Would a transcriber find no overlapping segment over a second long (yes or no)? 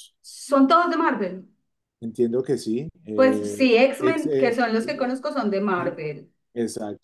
no